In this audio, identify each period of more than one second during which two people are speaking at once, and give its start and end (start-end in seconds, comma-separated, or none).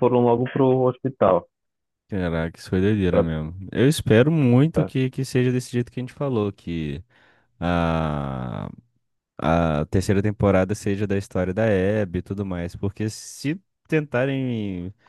none